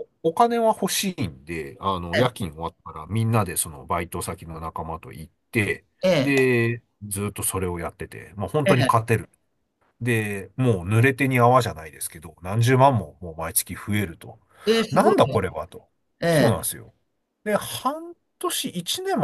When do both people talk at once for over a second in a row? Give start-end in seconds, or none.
none